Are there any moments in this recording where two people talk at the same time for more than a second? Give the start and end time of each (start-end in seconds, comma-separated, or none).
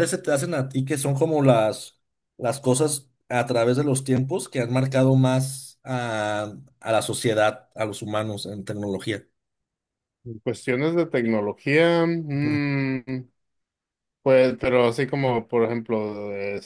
none